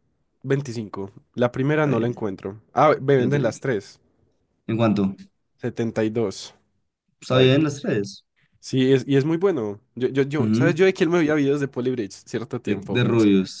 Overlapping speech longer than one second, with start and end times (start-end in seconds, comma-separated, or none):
none